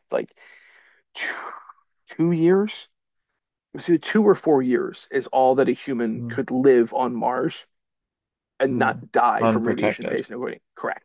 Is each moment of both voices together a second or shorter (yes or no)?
no